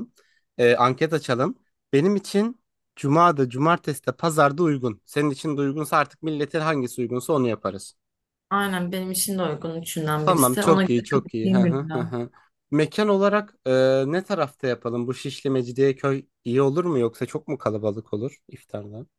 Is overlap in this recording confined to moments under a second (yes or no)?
no